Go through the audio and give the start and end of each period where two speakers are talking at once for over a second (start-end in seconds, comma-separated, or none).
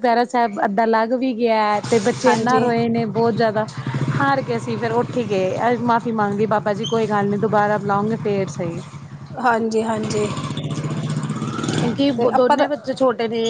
none